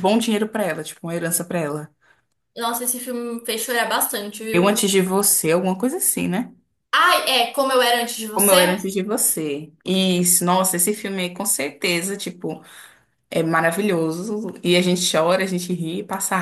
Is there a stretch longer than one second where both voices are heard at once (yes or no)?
no